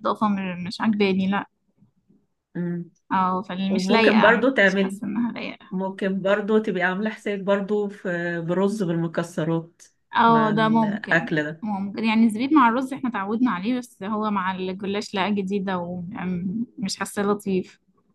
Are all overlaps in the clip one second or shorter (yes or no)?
no